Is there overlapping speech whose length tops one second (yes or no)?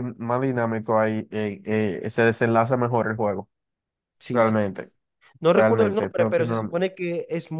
yes